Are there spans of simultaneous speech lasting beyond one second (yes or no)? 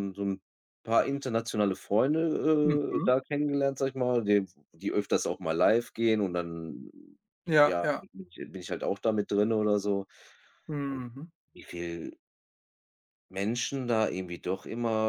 no